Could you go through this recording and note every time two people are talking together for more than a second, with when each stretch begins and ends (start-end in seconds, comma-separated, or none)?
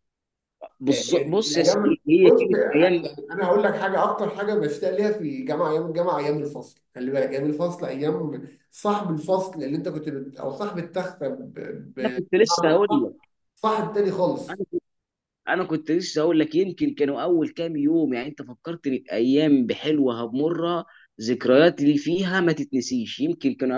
0.9-3.1